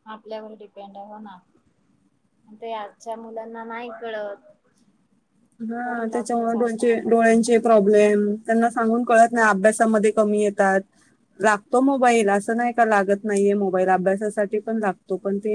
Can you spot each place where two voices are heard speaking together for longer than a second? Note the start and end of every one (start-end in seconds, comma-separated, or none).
5.8-7.6